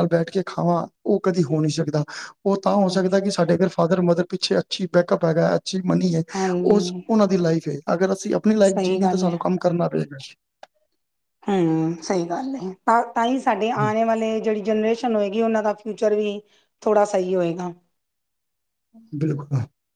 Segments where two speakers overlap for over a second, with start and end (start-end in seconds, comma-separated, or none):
none